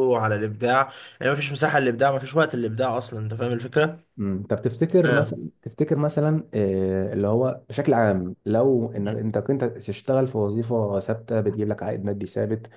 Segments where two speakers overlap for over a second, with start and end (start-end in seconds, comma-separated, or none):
none